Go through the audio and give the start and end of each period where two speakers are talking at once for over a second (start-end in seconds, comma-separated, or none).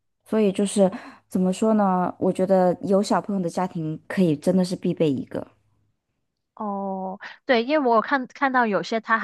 none